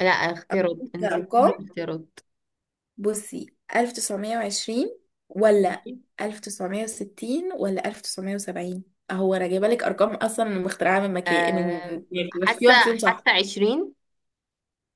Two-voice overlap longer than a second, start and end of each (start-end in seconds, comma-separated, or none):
11.3-13.3